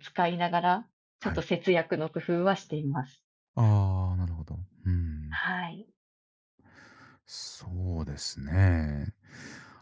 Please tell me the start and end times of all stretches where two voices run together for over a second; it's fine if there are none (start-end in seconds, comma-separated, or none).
none